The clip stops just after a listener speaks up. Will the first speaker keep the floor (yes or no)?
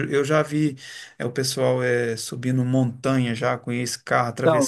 yes